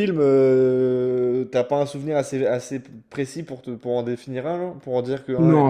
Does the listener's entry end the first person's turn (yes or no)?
yes